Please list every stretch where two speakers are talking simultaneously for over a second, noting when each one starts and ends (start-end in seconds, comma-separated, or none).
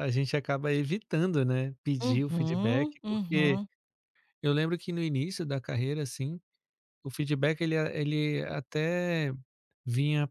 2.0-3.6